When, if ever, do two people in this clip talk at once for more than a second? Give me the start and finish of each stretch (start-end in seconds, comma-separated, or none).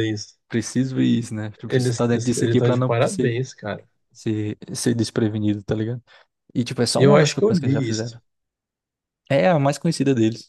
1.7-3.4, 7.0-8.2